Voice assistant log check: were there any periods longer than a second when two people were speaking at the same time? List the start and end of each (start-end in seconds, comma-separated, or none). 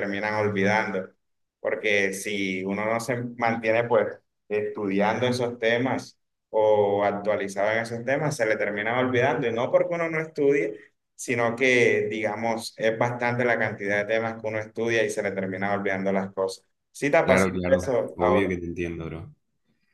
17.2-18.5